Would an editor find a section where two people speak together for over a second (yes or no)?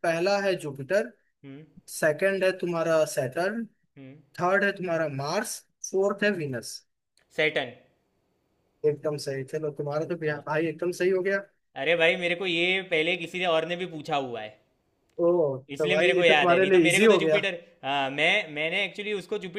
yes